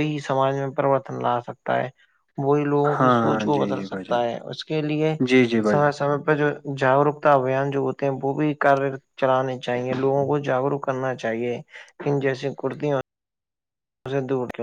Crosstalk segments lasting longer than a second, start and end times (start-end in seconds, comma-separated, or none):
3.0-4.2